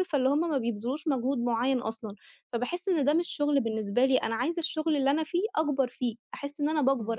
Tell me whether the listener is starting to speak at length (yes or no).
no